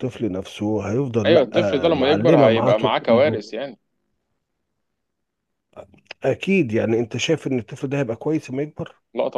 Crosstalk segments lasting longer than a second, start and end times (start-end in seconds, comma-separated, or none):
1.3-3.4